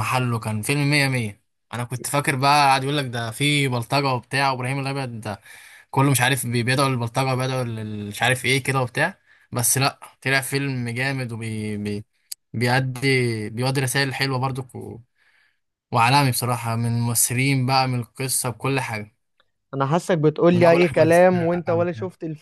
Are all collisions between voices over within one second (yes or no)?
no